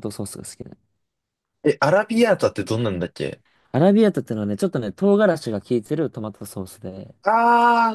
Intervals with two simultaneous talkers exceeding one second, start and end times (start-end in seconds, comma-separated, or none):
none